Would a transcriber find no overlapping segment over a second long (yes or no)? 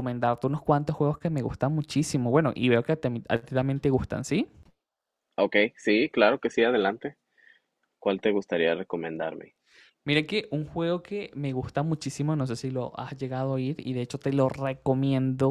yes